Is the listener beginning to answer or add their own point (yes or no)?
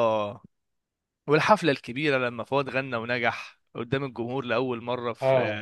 yes